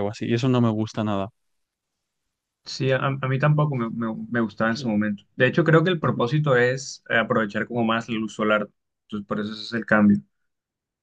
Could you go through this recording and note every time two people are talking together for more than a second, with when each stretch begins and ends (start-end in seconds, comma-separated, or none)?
none